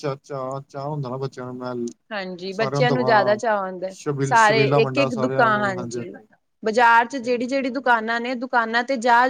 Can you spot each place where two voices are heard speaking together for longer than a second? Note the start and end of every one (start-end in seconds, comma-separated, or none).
4.0-6.0